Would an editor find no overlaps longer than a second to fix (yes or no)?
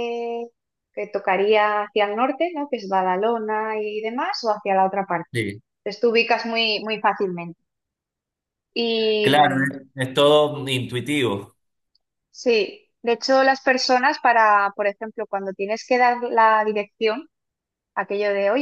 yes